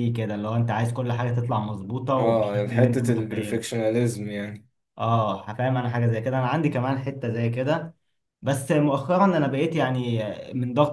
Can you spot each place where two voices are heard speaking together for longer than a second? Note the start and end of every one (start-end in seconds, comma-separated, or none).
2.1-3.6